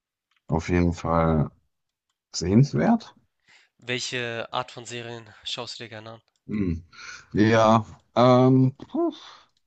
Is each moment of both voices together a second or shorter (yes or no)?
yes